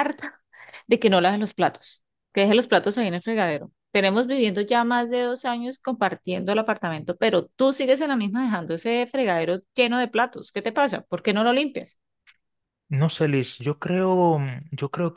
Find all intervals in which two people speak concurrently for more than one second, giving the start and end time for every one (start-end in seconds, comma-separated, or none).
none